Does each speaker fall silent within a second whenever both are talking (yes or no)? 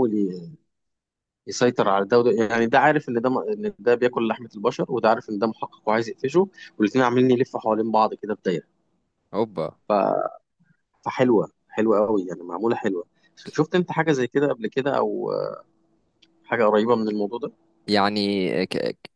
yes